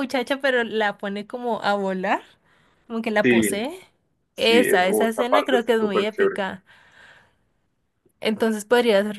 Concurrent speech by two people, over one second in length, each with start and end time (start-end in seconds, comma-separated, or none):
4.4-6.4